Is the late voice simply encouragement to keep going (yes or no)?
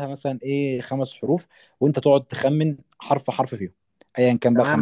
no